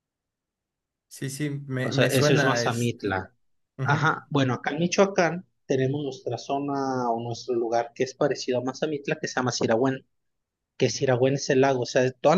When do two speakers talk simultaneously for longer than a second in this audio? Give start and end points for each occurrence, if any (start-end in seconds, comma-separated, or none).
1.8-3.2